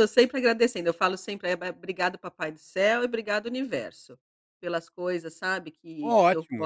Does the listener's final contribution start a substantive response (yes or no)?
yes